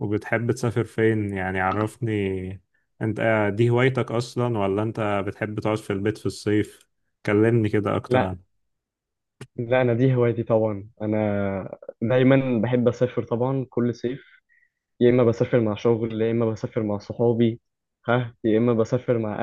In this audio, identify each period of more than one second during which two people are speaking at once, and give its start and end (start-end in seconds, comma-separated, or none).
none